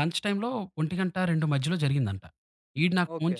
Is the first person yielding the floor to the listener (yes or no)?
no